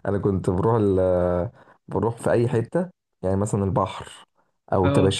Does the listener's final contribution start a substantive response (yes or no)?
no